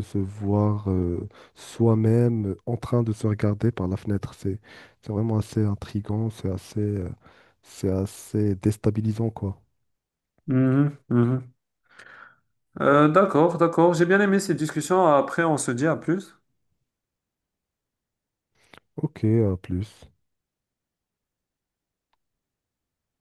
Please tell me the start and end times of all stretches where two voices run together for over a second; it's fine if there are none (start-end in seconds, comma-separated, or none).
none